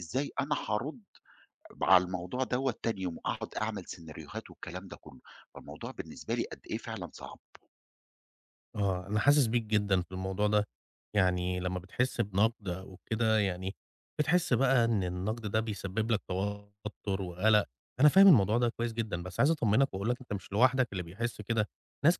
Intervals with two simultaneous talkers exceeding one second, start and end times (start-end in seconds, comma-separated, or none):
none